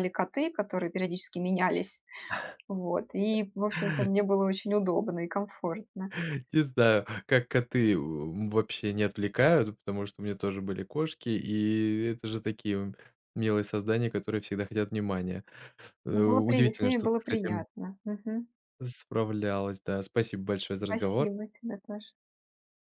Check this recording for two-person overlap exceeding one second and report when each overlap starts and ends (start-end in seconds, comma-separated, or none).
16.1-17.6